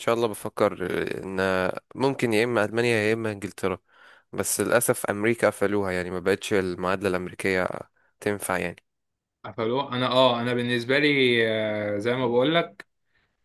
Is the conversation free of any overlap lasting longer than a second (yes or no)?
yes